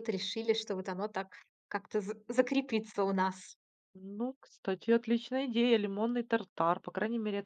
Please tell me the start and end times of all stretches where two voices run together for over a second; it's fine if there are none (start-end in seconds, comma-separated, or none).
none